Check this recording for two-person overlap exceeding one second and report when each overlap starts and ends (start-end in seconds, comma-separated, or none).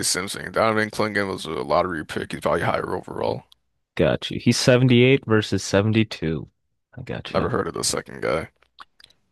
none